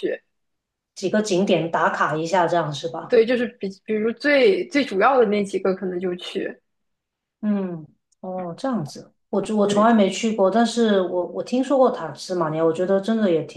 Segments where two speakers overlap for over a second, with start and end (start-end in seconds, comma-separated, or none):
none